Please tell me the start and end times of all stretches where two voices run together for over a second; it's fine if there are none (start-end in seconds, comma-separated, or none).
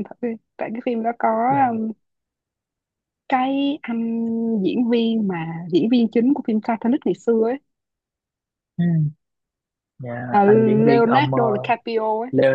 10.4-11.7